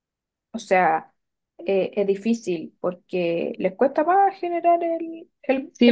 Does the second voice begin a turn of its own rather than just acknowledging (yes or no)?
yes